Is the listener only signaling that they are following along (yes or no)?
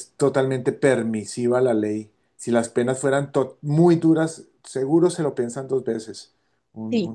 no